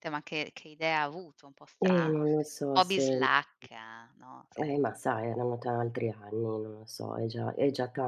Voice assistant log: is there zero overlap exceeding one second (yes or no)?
no